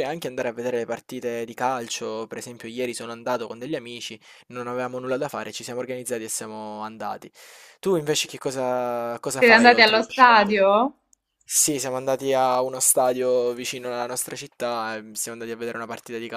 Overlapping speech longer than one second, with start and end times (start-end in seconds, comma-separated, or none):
9.4-10.7